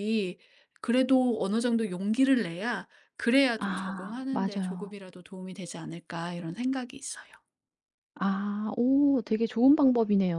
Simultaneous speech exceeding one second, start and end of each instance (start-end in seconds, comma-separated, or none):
3.6-4.9